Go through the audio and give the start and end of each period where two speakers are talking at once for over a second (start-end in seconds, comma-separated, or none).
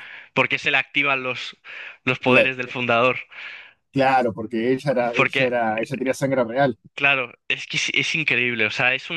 none